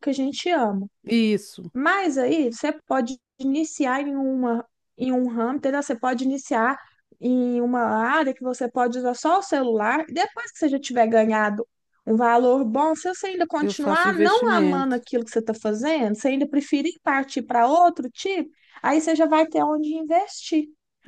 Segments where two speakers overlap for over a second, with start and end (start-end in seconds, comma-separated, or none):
13.6-15.0